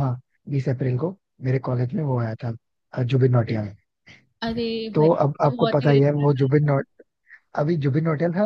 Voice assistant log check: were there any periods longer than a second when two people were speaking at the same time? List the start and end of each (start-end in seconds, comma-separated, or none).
5.0-6.4